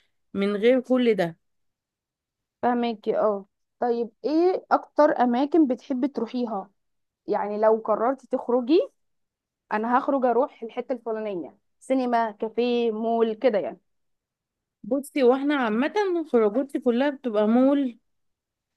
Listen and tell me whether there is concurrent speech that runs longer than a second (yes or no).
no